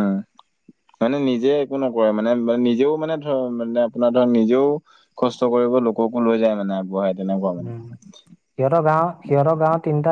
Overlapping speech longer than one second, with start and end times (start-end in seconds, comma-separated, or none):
none